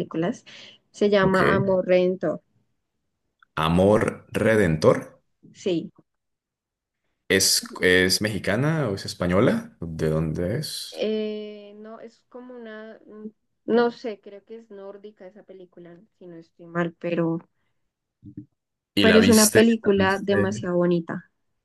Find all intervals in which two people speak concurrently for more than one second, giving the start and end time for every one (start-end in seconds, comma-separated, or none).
19.0-20.5